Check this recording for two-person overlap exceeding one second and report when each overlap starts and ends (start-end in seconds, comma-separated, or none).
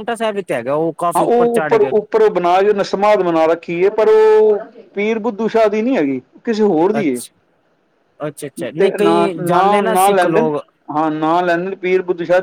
8.8-10.5